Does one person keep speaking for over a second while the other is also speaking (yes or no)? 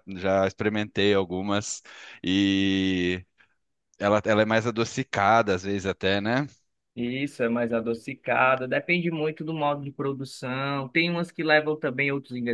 no